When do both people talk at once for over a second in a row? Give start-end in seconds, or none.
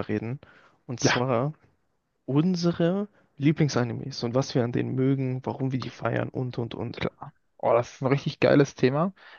none